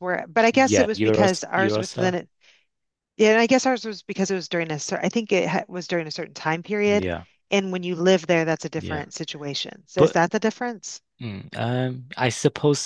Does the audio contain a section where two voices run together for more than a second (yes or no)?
yes